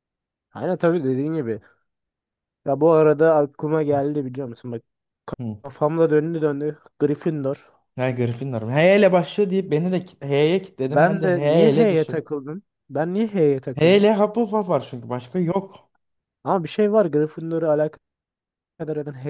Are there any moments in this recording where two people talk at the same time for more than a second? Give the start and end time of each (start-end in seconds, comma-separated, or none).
10.9-12.2